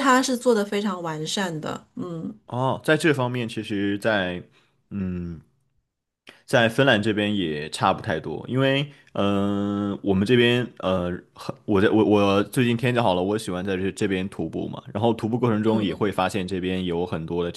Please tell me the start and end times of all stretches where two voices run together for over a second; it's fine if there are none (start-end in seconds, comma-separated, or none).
none